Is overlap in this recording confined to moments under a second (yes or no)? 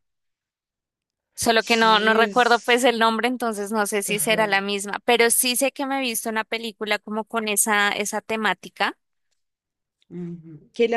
no